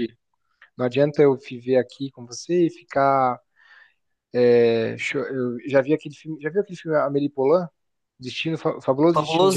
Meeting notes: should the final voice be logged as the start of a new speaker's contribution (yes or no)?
yes